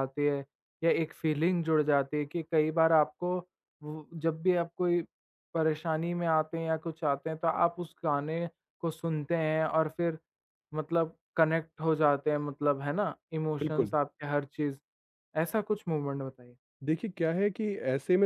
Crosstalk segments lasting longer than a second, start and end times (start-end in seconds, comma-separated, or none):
none